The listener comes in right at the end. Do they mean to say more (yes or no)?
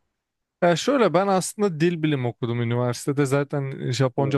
no